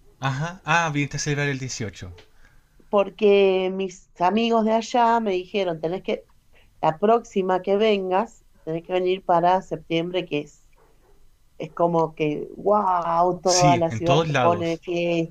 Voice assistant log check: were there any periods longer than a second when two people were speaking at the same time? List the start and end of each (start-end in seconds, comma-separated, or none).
13.4-14.8